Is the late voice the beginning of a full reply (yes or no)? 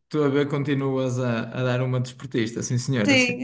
yes